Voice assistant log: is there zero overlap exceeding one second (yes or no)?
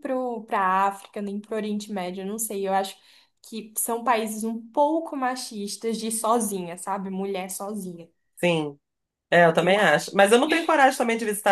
yes